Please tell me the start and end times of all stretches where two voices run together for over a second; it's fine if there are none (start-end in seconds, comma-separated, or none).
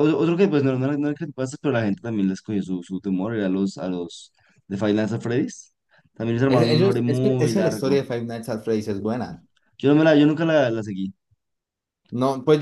6.5-8.0